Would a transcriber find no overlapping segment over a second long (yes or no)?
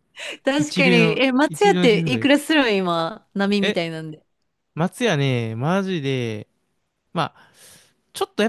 no